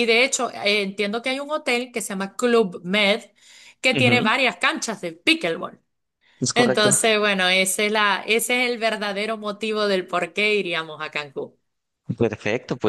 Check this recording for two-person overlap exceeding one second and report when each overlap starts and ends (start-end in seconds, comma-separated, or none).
none